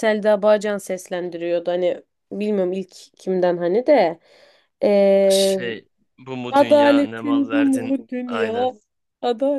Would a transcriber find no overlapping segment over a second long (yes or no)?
no